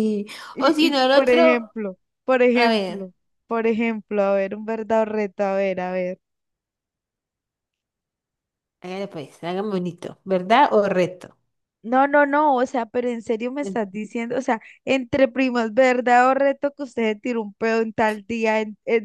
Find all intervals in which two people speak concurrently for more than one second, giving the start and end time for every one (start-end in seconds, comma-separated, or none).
0.5-1.7